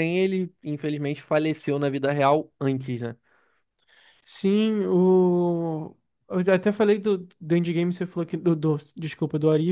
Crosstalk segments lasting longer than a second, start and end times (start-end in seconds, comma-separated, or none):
none